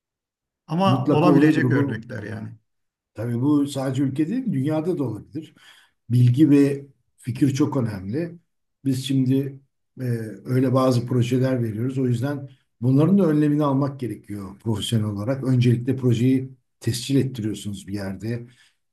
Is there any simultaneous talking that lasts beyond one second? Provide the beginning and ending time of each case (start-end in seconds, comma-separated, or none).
0.8-2.0